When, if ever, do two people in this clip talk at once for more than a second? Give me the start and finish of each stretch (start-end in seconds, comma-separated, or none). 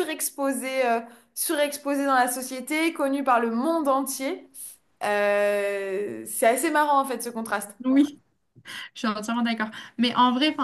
none